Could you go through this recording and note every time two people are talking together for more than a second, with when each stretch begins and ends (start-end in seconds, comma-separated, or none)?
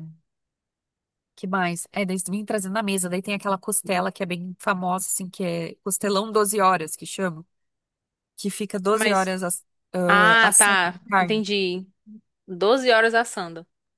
10.1-11.4